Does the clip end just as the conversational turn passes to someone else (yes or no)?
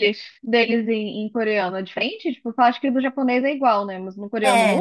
yes